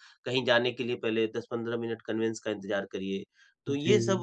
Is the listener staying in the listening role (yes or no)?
yes